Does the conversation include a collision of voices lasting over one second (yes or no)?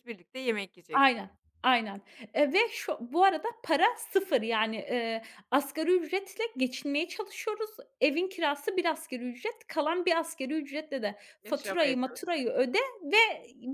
yes